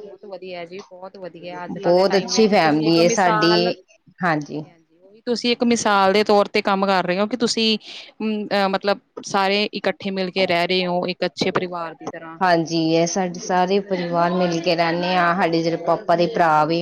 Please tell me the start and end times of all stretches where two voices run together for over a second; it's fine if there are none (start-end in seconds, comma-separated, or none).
1.8-3.5